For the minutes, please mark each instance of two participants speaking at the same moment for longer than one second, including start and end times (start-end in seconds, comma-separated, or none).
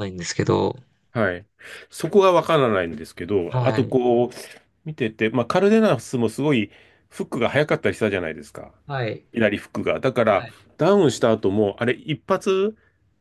none